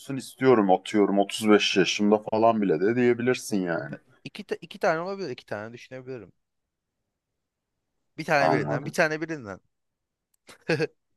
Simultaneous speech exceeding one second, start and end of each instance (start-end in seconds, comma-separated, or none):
none